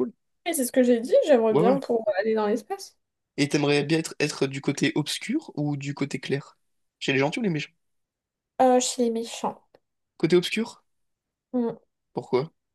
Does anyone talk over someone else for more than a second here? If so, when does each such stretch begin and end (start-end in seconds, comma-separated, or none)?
none